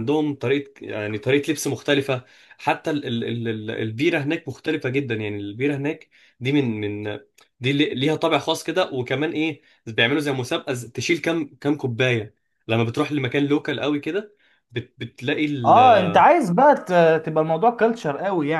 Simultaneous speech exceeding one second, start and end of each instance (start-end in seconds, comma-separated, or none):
none